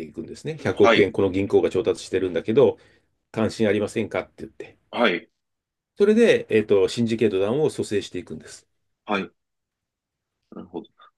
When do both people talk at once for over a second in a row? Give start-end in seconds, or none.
none